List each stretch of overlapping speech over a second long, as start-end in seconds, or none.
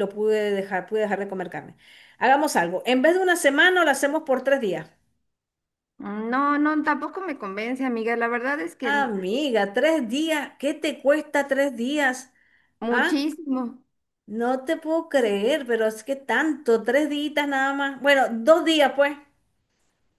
none